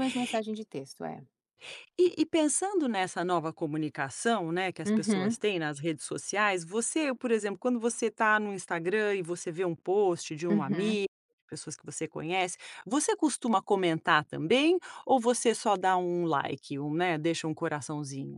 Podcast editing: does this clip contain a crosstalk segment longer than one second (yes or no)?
no